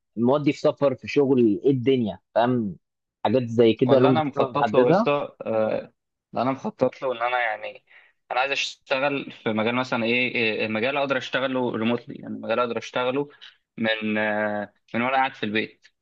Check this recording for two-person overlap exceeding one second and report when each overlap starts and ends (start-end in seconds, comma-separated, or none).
3.9-5.1